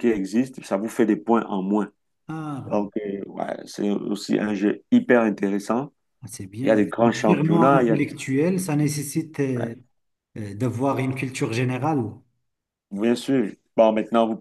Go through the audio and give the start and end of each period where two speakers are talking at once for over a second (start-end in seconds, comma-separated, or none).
6.6-8.1